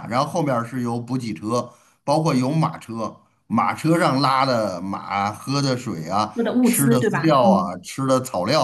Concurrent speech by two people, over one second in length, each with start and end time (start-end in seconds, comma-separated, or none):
6.3-7.8